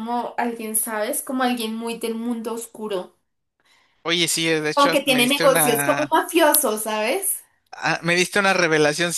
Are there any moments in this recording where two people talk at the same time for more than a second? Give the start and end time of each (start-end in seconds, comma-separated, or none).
4.7-6.1